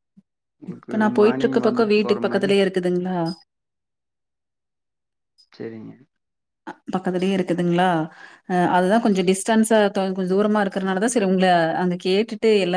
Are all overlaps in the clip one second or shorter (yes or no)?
no